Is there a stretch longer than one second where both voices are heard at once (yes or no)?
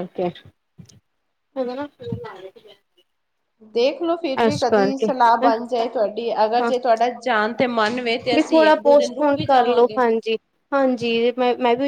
yes